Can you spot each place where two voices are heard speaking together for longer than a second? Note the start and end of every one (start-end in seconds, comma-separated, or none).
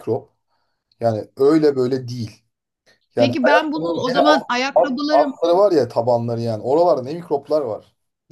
3.2-5.3